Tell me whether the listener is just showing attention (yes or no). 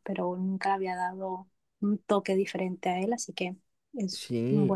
no